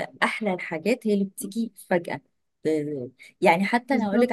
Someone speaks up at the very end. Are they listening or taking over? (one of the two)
listening